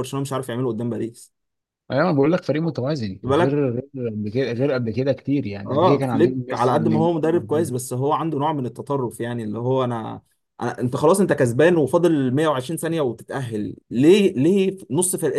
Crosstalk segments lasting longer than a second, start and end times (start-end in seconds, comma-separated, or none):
5.7-7.7